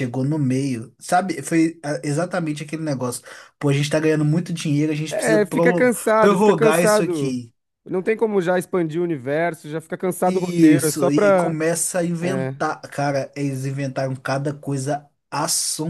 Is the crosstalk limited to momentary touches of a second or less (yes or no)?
no